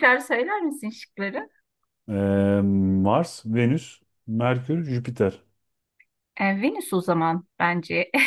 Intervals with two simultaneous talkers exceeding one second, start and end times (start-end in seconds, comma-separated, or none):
none